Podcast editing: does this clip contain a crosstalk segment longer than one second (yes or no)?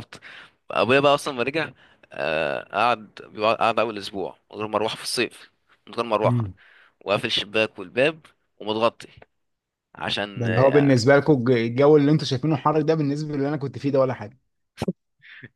no